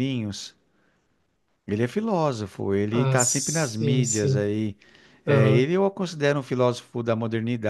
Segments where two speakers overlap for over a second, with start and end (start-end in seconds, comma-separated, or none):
2.9-4.5